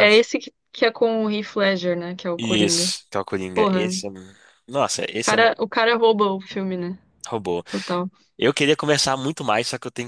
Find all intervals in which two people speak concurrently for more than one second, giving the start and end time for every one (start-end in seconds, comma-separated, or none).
none